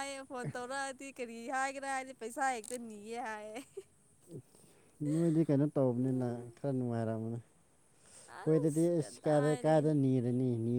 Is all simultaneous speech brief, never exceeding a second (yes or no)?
no